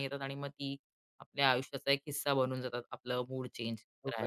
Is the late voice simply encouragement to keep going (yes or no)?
no